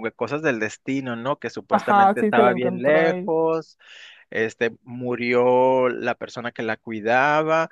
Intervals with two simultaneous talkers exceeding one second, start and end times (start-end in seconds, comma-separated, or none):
1.7-3.3